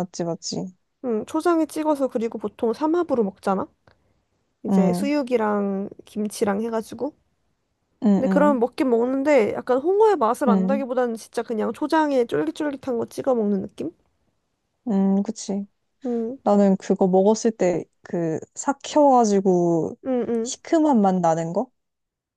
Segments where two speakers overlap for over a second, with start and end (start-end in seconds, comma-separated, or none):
none